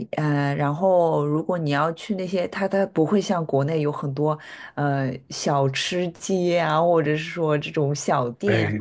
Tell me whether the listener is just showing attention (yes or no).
no